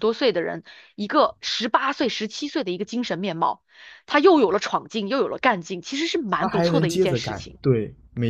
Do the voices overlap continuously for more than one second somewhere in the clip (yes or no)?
yes